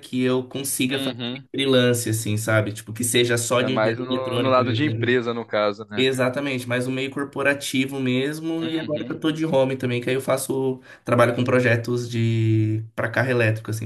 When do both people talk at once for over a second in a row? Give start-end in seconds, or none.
3.6-5.1